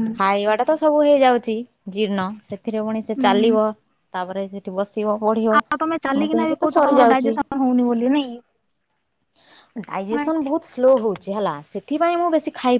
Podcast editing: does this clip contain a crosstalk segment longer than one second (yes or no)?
yes